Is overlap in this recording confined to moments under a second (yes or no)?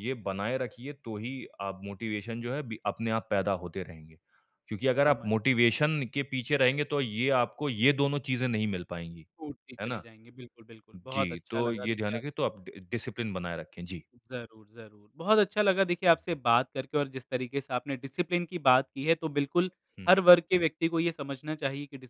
no